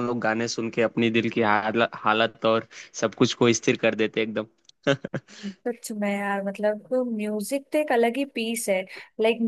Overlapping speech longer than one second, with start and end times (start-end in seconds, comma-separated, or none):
none